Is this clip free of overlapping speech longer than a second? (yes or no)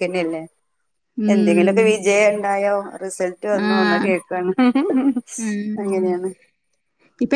yes